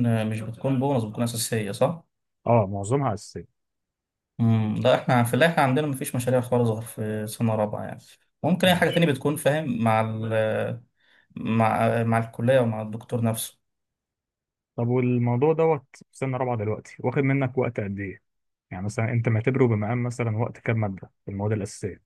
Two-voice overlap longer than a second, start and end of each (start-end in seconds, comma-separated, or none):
none